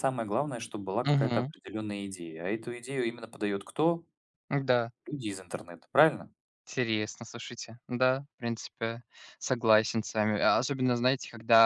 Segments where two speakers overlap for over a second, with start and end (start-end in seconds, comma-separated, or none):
none